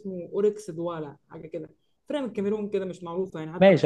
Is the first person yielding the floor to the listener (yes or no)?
yes